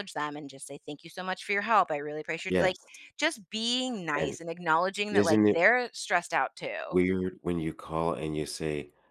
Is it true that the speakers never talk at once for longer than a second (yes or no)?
yes